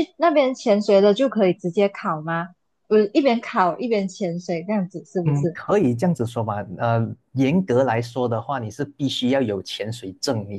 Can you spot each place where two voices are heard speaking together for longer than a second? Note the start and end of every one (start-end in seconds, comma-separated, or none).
none